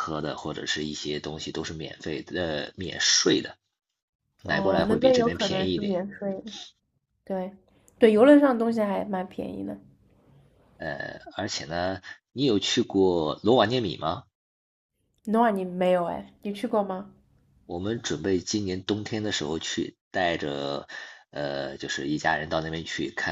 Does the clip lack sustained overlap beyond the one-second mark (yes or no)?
no